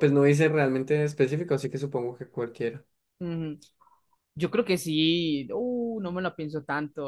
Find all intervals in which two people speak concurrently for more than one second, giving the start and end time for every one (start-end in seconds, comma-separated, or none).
none